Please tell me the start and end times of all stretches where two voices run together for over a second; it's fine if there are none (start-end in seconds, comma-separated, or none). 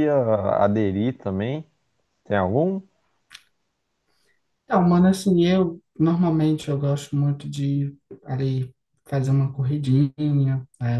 none